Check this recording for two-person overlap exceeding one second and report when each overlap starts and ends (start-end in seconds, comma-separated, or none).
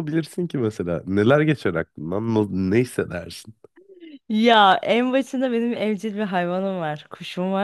none